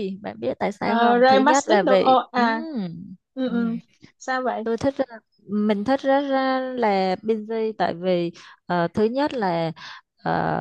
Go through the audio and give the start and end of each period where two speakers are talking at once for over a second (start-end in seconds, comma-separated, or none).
0.8-2.6